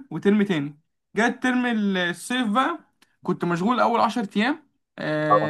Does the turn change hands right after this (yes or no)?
no